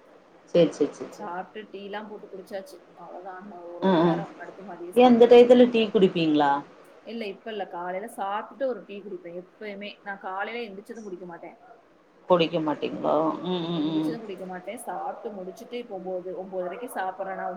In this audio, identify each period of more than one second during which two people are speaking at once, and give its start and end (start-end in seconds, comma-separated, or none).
none